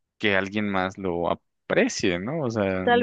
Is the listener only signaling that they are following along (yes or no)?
no